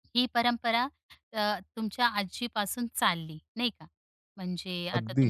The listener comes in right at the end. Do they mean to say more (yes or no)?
no